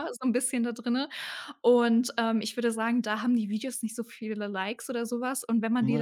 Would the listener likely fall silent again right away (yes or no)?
yes